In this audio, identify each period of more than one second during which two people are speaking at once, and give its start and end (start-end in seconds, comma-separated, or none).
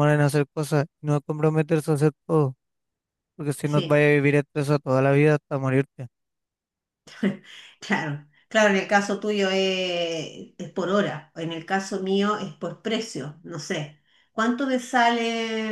none